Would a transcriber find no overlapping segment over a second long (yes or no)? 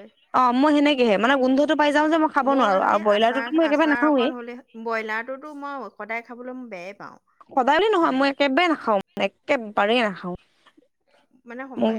no